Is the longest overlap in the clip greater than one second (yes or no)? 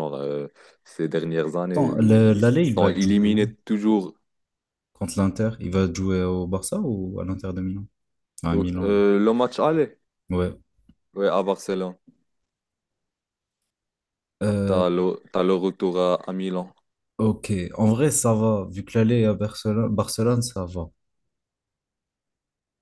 yes